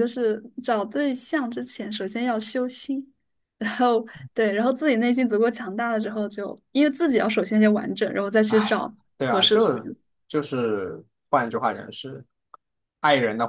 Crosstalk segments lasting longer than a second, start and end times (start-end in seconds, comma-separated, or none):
8.5-9.9